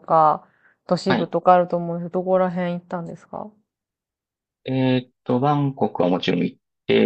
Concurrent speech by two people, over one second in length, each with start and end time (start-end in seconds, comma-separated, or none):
none